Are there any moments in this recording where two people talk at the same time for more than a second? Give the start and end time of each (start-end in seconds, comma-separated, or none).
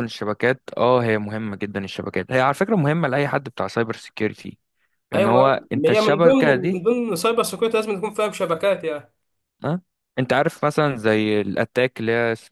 5.1-6.8